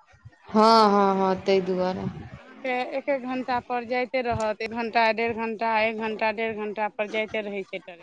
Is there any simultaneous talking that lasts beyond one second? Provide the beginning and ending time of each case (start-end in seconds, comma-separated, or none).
none